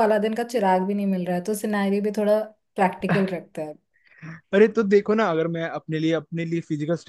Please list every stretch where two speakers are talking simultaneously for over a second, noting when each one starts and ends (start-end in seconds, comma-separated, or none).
none